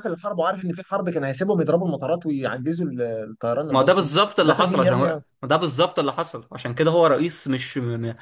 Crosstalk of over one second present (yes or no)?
yes